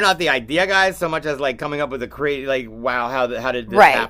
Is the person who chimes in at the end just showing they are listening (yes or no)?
yes